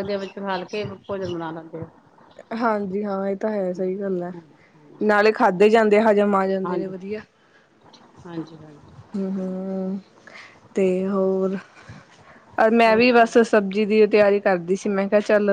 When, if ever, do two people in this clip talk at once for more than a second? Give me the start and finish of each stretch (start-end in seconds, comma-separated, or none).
none